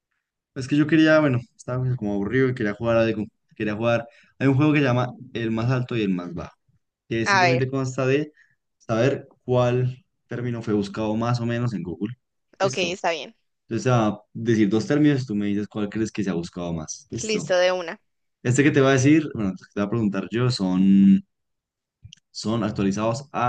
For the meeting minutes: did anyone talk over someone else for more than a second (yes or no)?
no